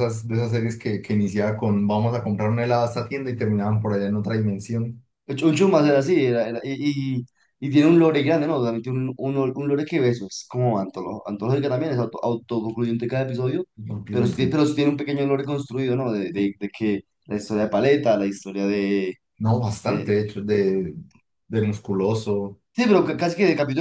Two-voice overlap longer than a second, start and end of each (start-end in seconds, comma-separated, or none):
none